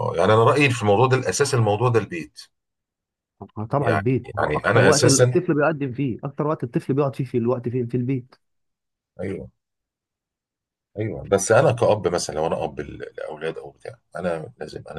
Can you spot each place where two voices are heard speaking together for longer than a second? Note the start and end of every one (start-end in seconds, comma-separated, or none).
3.8-5.4